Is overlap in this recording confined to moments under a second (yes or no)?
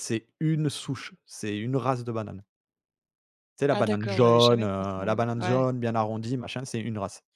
no